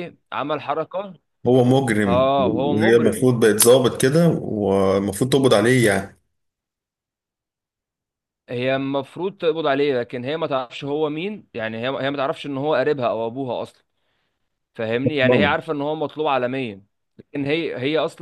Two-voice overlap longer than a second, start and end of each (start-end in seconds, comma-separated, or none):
2.0-3.3